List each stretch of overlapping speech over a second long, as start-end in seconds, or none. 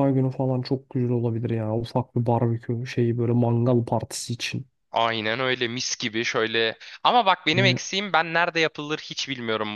none